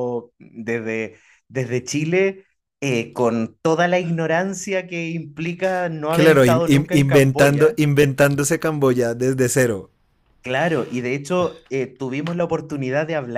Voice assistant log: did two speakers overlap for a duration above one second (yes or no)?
yes